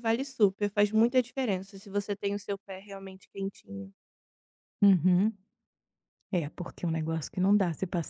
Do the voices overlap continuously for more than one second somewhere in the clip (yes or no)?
no